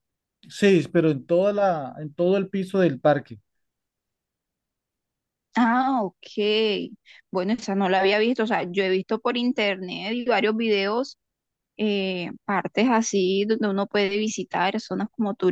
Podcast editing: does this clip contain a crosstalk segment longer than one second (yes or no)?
no